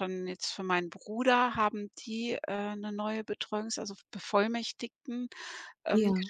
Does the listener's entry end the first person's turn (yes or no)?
no